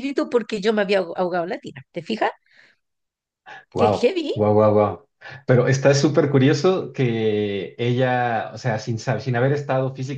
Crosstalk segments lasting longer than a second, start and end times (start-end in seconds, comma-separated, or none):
none